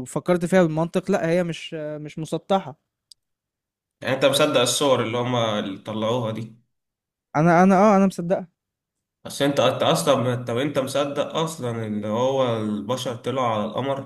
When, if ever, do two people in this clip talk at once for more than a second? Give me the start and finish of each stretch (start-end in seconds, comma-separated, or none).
none